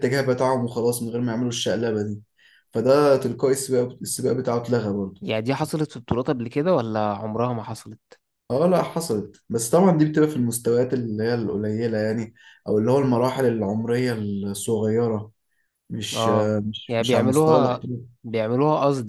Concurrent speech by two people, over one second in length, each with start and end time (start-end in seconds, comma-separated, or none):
16.1-17.9